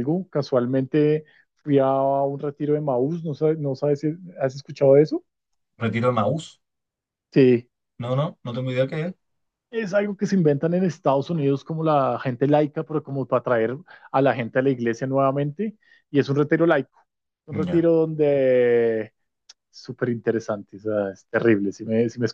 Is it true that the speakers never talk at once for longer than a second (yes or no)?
yes